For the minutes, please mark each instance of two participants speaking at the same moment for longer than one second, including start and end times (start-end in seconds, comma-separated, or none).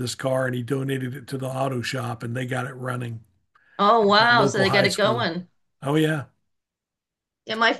4.0-5.3